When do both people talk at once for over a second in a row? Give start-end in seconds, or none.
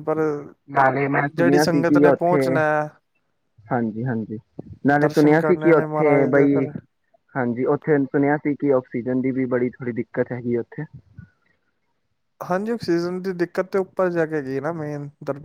5.0-6.6